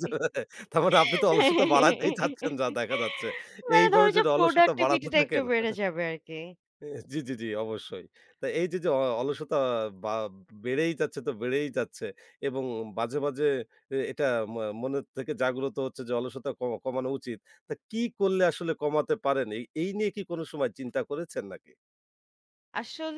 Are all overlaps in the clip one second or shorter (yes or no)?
no